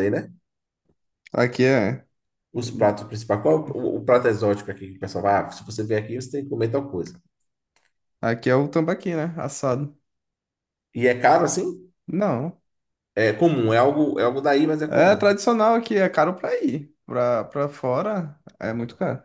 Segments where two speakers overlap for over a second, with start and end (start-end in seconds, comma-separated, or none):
none